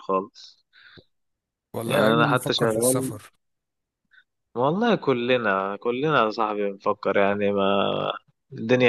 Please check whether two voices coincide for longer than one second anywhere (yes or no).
yes